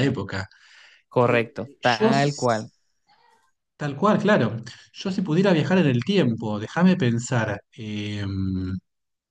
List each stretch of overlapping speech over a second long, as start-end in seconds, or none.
1.2-2.7